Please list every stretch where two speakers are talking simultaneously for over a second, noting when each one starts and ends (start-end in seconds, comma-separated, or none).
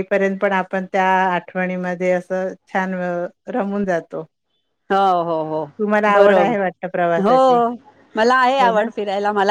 6.1-7.3